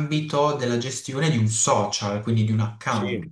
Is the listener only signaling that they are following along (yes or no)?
no